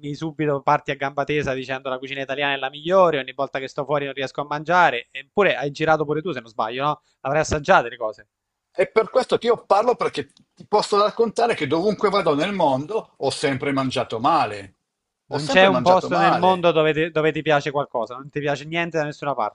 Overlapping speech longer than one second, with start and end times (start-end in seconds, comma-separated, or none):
15.3-16.7